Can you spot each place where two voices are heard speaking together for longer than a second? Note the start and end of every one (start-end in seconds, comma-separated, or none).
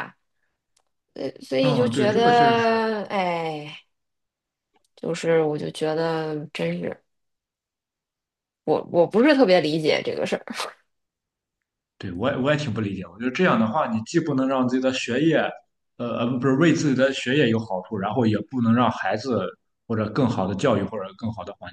1.6-2.8